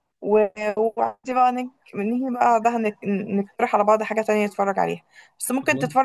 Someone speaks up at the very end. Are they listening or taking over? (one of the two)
listening